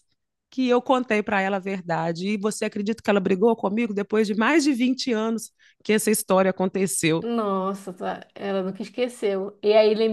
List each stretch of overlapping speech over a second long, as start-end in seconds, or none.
none